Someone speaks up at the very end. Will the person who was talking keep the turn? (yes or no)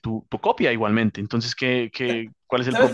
no